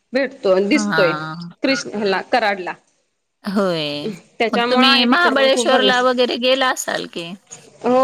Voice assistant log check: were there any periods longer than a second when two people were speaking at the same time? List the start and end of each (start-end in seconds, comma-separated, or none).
4.5-6.1